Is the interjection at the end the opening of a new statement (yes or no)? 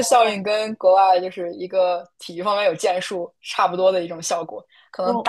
no